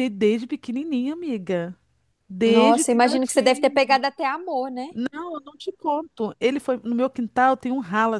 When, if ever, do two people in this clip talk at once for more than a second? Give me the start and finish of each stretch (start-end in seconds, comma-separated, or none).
2.5-4.0